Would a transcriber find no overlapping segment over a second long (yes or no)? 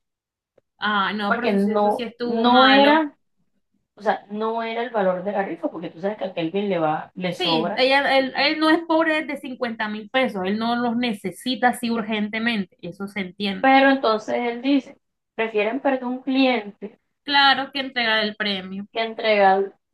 no